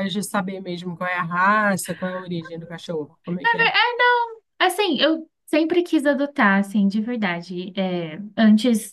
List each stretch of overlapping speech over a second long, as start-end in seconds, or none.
none